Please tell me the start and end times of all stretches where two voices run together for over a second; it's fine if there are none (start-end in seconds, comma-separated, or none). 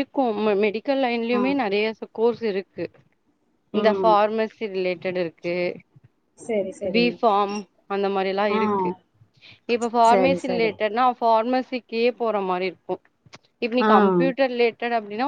none